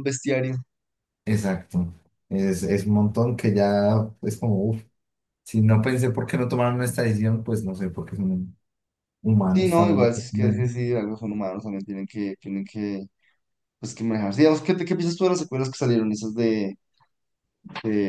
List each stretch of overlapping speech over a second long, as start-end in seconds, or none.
none